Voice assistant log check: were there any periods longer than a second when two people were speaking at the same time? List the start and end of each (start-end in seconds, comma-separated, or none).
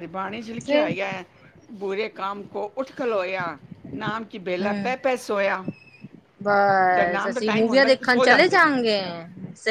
6.9-8.7